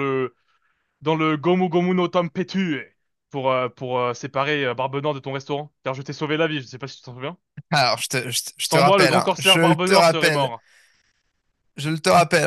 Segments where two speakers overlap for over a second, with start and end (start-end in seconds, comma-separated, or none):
8.6-10.5